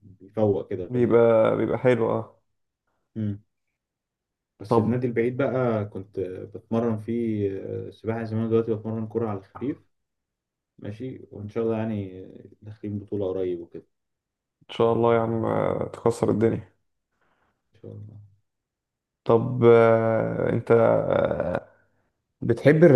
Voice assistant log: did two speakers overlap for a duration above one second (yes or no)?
no